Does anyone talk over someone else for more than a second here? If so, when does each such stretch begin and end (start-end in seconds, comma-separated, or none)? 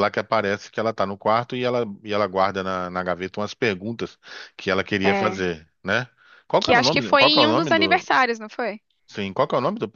6.6-8.1